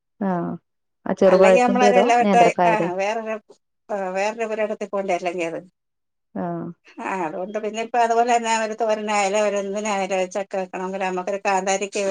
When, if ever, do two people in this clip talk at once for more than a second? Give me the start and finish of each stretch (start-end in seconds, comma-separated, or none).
1.3-2.9